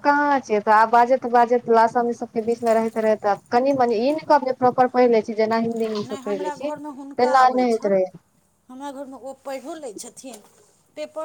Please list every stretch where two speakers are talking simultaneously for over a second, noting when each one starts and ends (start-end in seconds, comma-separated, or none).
6.1-8.0